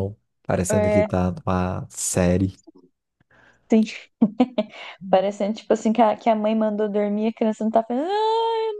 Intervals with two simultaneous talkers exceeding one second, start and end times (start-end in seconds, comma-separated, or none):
none